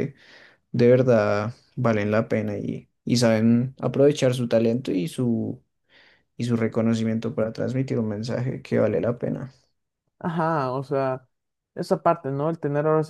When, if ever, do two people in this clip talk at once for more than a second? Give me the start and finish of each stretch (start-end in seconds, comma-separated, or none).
none